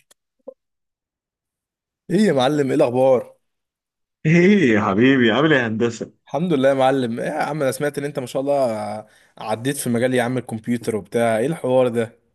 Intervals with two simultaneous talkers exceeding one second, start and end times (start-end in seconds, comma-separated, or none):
none